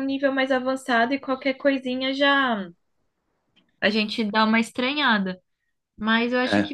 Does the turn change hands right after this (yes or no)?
no